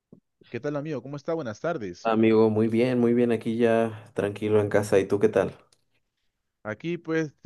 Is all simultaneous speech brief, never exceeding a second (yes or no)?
yes